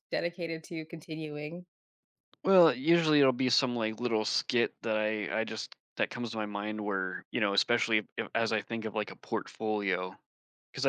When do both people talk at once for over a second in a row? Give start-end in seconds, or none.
none